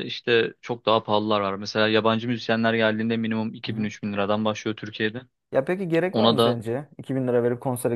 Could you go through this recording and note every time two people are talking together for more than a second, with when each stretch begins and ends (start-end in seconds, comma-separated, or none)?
none